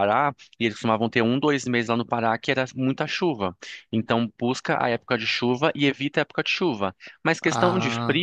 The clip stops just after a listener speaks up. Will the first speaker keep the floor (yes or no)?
yes